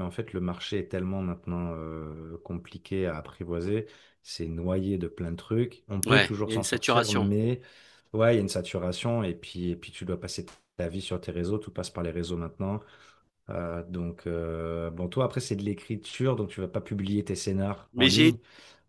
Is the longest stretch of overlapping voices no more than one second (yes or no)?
no